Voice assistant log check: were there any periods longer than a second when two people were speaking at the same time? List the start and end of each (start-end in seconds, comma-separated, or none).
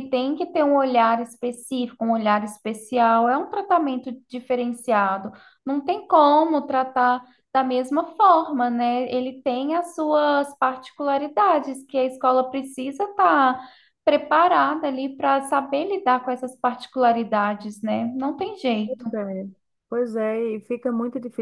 none